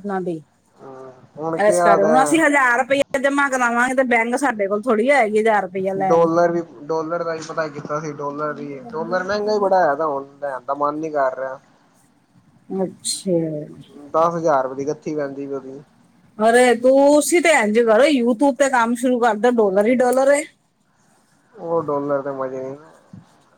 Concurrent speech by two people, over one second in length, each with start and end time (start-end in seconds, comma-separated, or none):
none